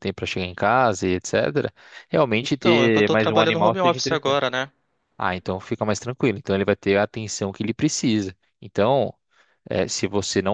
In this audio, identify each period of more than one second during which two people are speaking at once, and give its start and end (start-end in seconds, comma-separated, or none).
2.4-4.4